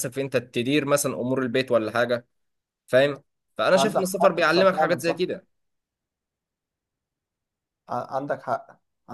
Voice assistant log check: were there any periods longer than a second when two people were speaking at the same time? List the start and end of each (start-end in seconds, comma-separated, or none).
3.7-5.2